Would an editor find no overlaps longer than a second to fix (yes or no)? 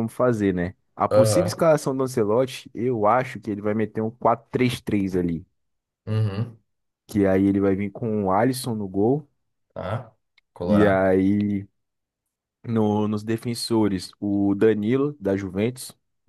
yes